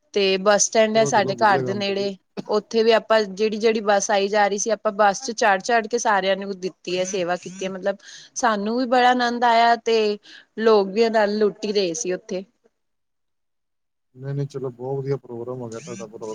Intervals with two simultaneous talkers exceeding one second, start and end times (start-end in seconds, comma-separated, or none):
0.8-2.0